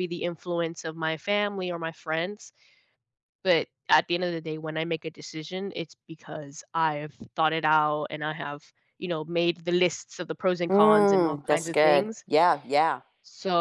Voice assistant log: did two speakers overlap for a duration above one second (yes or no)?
yes